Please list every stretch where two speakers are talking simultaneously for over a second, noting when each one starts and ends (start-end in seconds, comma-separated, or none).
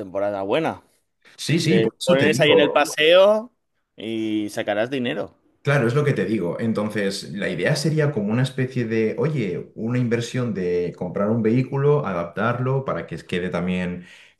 1.6-2.9